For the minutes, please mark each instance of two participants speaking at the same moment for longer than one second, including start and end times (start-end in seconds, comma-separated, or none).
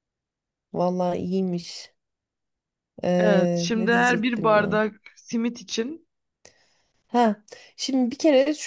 3.2-4.8